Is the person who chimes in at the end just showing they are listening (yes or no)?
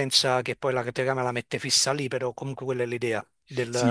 no